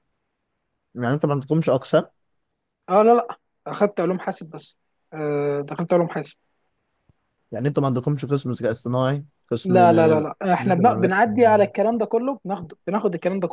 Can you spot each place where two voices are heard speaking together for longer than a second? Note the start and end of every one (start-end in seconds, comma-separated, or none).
9.6-11.2